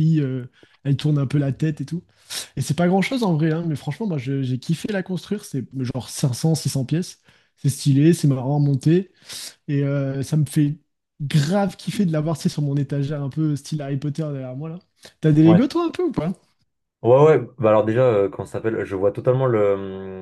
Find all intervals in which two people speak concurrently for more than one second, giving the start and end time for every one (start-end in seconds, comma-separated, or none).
none